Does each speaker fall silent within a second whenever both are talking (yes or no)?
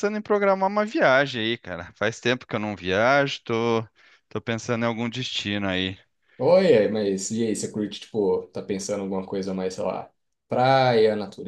yes